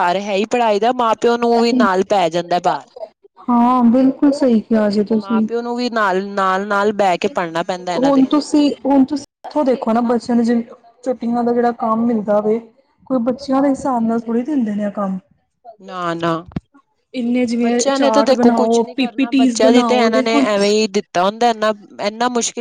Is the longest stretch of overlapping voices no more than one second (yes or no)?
no